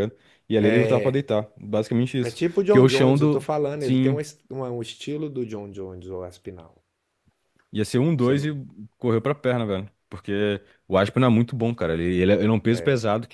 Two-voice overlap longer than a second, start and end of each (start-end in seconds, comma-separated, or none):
2.2-4.2